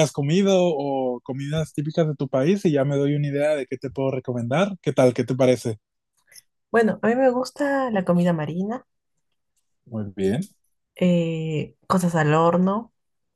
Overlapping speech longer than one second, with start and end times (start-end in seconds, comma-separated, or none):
none